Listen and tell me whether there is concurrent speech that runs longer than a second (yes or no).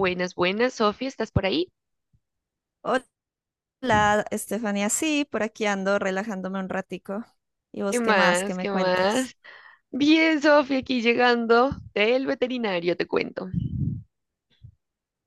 yes